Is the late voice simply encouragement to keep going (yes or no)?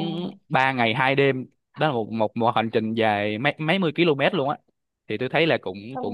no